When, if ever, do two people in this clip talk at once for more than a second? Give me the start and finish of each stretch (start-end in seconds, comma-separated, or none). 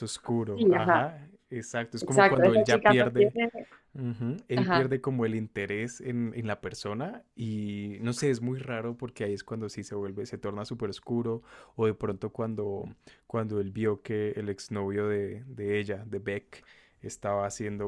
2.0-3.3